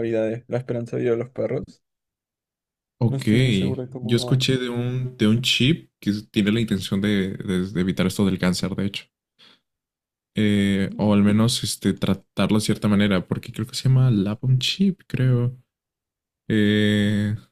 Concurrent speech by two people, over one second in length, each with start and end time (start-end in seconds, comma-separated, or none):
none